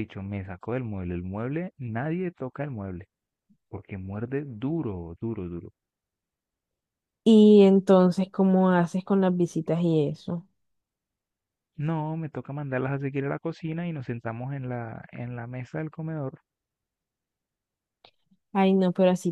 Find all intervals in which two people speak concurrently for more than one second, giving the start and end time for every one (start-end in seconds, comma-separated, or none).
none